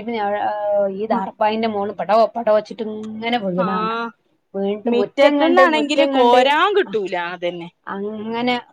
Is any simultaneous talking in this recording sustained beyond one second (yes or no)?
yes